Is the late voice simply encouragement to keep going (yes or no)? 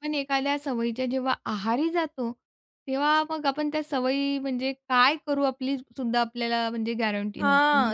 no